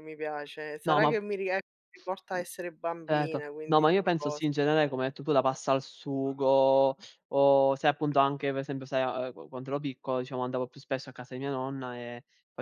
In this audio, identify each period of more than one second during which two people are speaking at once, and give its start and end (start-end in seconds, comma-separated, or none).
3.1-4.5